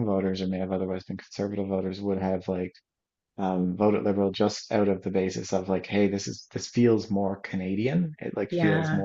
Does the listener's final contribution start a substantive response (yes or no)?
no